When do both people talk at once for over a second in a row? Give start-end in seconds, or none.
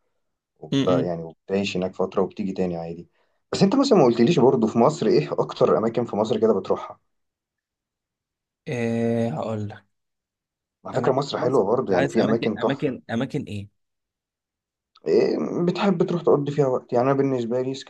10.9-13.0